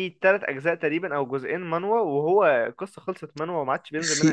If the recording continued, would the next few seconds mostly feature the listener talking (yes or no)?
yes